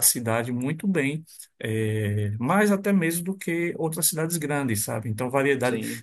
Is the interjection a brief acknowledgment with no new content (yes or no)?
yes